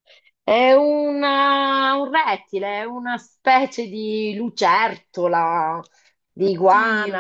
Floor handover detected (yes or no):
no